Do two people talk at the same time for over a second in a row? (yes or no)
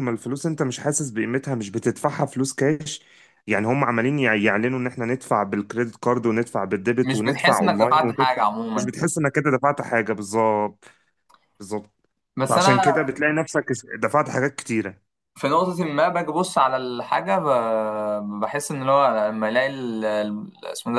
yes